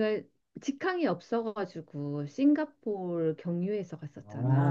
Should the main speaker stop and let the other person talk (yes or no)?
yes